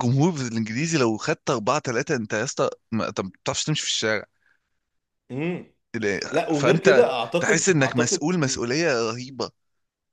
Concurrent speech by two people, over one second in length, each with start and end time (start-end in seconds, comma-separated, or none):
6.5-8.3